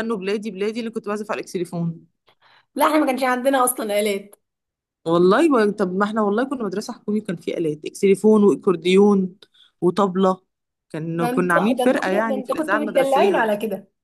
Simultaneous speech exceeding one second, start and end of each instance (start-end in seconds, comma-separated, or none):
11.2-13.5